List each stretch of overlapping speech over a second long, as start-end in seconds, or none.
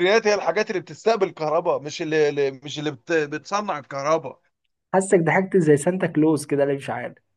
none